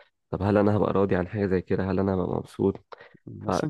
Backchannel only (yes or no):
no